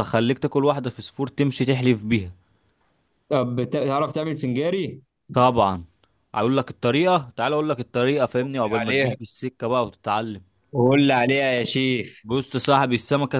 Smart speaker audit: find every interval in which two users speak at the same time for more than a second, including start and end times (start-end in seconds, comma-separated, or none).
none